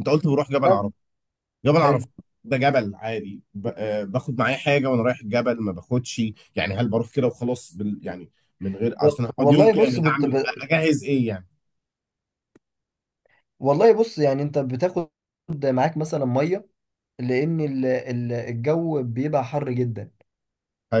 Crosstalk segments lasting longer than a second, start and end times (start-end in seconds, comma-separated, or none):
9.0-10.3